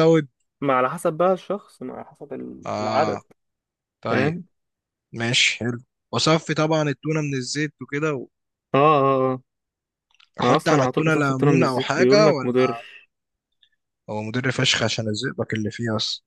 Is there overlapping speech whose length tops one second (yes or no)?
yes